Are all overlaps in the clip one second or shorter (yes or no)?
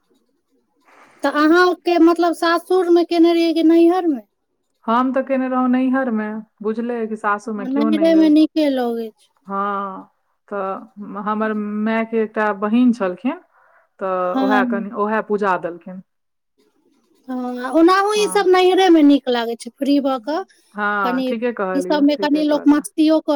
no